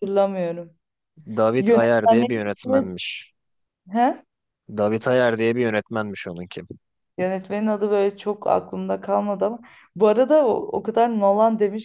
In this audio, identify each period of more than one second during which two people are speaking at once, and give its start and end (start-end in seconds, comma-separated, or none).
1.6-2.9